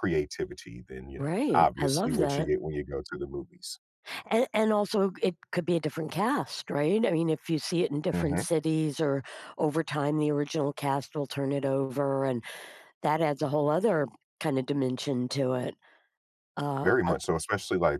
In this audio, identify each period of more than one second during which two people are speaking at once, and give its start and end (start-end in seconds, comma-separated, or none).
1.1-2.5